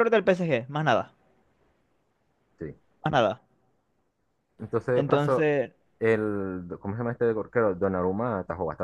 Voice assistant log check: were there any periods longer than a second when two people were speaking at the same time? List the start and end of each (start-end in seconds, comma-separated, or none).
none